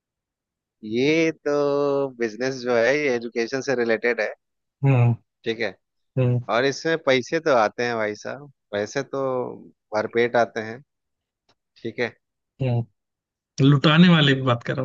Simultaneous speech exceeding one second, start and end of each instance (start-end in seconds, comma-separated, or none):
none